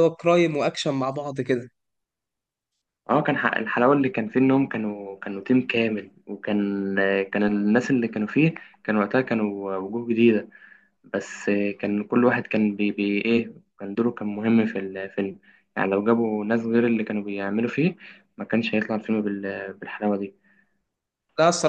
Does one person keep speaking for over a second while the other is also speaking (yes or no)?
no